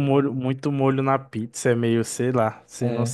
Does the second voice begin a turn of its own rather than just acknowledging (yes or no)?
yes